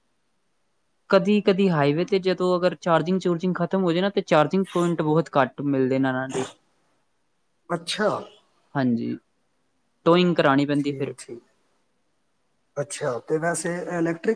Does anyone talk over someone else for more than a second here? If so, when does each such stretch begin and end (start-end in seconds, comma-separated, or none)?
none